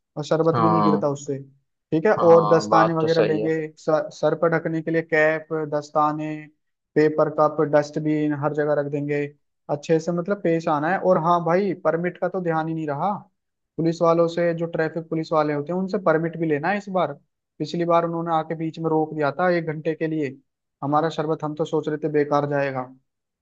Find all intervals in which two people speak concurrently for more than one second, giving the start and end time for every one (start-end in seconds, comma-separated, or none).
2.2-3.5